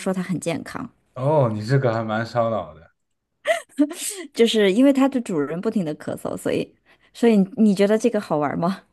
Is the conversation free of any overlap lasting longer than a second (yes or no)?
yes